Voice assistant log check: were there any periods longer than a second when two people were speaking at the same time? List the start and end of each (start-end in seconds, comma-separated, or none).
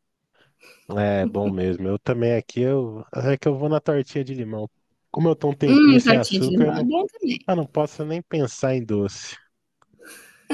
5.7-6.9